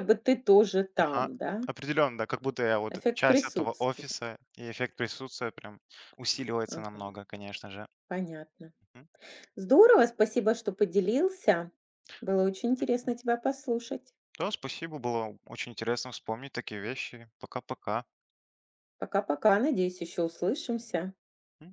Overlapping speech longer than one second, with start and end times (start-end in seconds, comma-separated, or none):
2.9-4.2